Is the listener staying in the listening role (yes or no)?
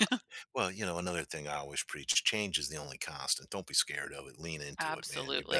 no